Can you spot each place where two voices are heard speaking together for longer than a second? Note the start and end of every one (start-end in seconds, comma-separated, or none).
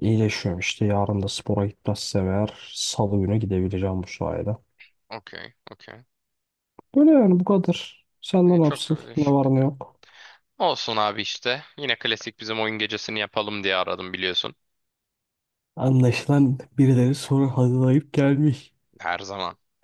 8.5-9.7